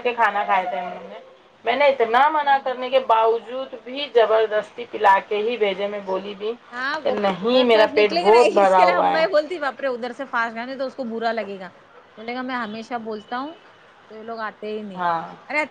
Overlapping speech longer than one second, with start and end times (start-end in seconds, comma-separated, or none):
7.0-9.2